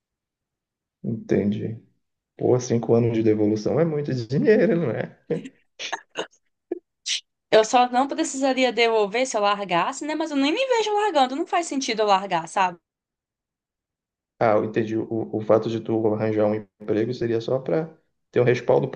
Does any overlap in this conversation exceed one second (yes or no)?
no